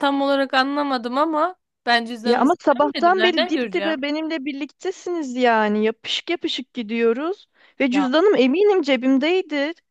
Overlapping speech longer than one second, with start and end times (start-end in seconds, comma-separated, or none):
2.2-4.0